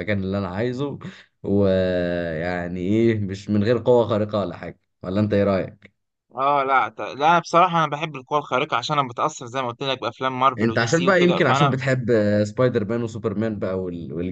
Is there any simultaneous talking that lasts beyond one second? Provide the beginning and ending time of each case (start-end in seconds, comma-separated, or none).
10.6-11.8